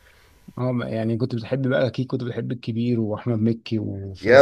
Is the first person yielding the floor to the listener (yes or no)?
yes